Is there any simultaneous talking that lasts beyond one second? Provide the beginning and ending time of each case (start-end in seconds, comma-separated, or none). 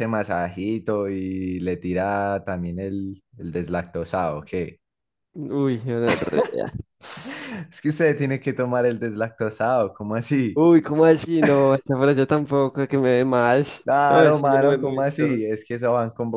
13.8-15.4